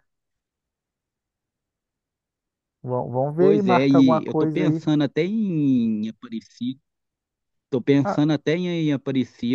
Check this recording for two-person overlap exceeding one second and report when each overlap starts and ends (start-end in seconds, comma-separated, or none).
3.4-4.8